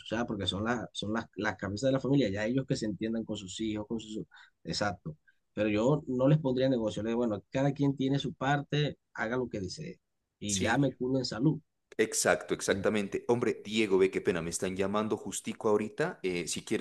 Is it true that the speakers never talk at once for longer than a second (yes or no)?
yes